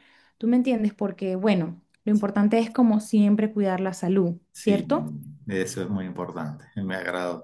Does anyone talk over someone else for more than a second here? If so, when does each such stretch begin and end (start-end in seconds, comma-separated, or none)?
none